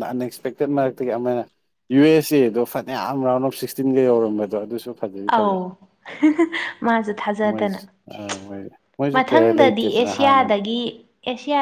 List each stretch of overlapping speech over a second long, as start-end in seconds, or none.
9.2-10.6